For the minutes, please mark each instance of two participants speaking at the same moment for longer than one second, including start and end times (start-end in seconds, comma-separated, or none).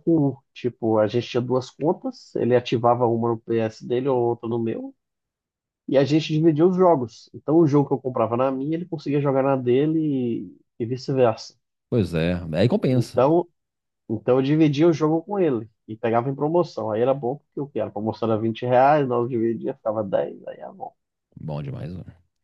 none